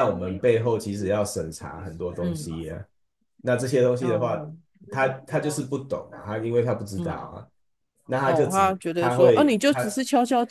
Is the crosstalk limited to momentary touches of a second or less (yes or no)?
no